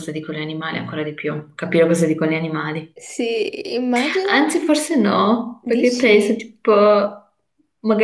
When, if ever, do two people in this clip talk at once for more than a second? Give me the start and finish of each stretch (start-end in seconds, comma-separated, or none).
none